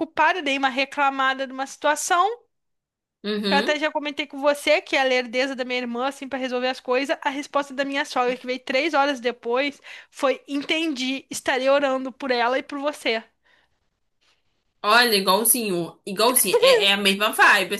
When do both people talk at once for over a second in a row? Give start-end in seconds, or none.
none